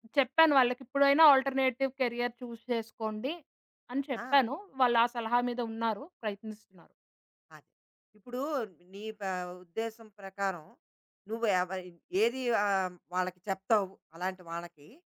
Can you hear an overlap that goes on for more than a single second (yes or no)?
no